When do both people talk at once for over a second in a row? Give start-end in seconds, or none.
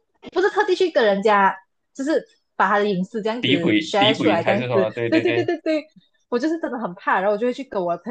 3.4-5.5